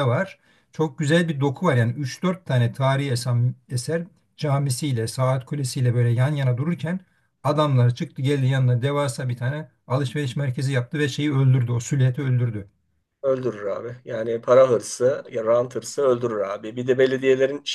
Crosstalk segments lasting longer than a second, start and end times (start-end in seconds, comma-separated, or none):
none